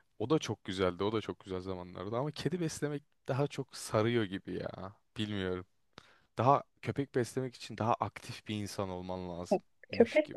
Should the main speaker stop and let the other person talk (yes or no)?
yes